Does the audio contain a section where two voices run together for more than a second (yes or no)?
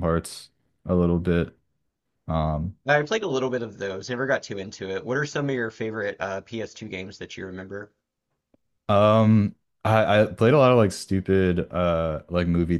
no